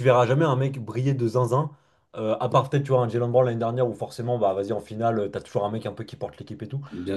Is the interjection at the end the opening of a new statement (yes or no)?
no